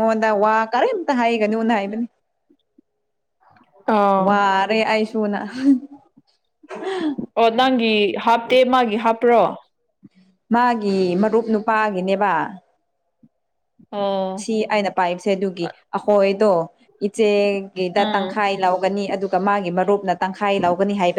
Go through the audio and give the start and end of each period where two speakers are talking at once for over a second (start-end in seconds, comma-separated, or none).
none